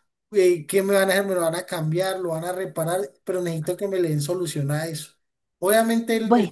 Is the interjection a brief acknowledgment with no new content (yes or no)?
yes